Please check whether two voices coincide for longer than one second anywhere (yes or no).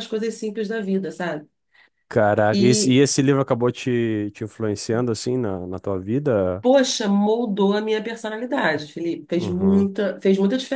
no